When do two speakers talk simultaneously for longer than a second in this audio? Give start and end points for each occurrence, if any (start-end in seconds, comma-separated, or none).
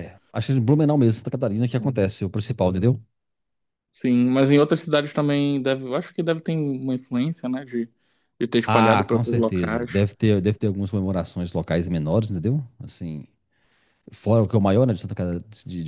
8.7-10.1